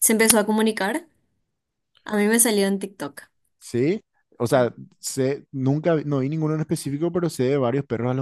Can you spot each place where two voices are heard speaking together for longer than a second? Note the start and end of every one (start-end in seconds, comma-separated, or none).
none